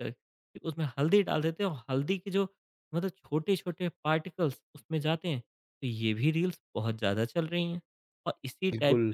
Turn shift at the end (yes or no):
no